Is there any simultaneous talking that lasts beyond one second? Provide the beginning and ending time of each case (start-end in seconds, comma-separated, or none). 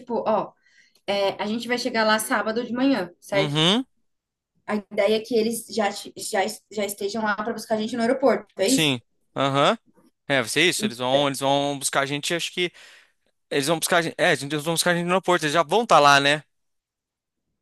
none